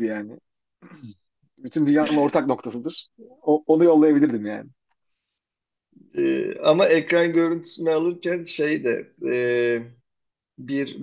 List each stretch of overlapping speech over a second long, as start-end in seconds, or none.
none